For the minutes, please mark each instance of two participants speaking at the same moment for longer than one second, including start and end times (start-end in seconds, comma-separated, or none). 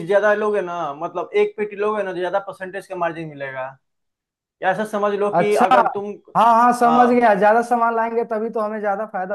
none